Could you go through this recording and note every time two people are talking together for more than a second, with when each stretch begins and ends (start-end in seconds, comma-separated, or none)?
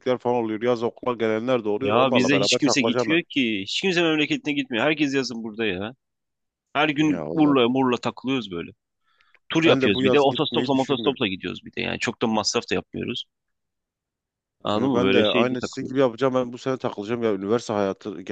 1.8-3.2, 9.6-11.2, 14.7-16.0